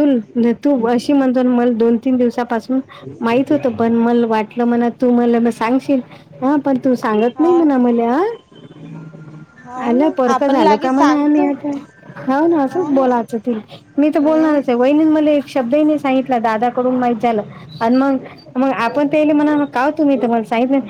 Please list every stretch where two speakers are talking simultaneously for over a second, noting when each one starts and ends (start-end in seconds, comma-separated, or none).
9.9-11.5